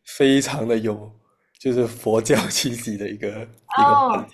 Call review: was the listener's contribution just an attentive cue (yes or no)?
no